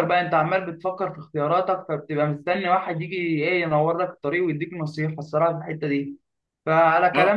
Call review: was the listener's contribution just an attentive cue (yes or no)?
yes